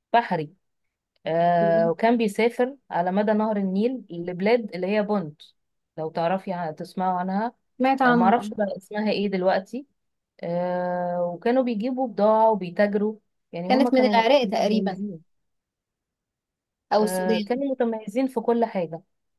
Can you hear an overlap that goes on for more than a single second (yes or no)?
yes